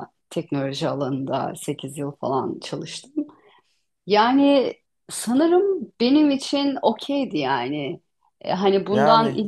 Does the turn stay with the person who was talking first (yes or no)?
yes